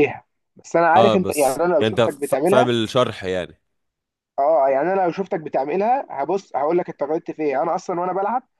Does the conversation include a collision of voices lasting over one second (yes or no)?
yes